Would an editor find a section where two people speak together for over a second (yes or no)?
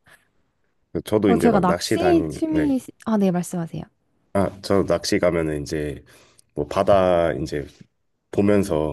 yes